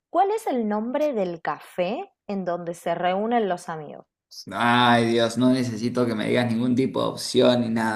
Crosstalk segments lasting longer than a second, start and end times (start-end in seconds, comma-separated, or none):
none